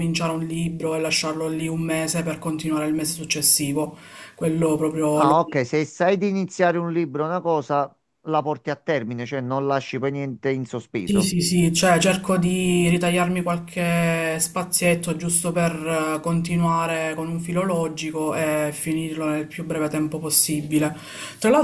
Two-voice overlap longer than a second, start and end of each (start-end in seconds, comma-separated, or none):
none